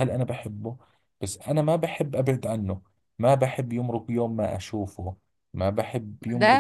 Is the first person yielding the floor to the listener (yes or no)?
yes